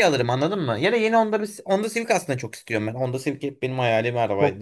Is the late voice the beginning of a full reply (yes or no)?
yes